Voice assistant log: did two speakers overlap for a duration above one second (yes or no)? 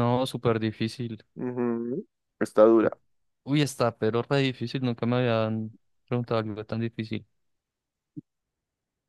no